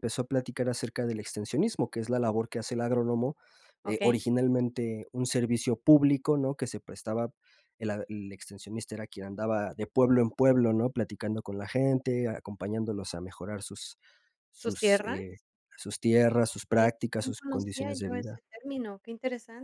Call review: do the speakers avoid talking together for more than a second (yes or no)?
no